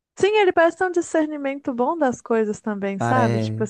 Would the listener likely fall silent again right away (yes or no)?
yes